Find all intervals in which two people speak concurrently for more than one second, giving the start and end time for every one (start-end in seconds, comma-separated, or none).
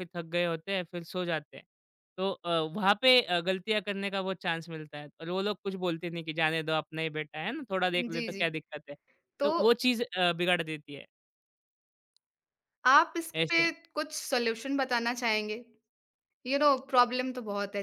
none